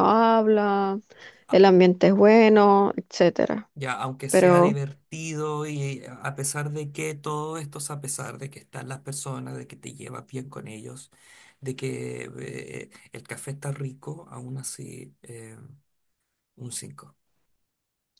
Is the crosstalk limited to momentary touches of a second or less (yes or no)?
yes